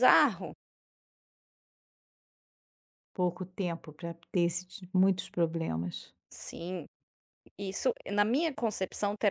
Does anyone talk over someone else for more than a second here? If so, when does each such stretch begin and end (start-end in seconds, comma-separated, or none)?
none